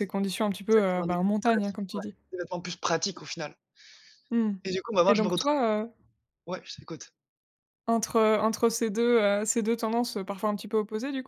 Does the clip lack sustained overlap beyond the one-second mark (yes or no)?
no